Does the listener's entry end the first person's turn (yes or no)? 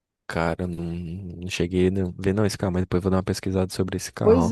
yes